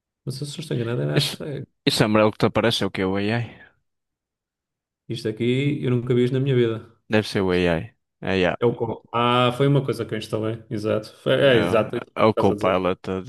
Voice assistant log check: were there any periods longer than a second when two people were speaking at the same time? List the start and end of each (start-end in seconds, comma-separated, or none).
11.4-12.8